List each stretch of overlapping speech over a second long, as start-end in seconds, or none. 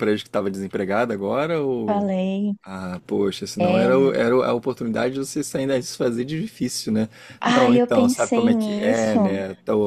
7.5-9.2